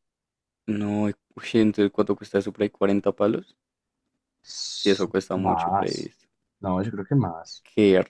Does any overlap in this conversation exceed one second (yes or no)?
yes